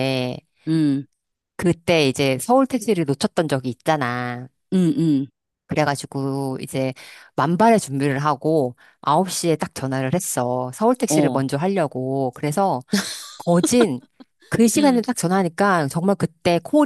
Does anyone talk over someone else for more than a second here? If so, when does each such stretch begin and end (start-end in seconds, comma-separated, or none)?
none